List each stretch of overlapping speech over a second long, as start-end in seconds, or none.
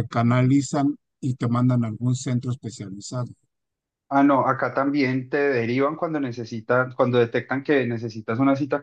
none